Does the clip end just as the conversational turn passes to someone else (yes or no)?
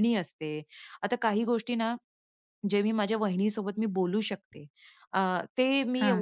no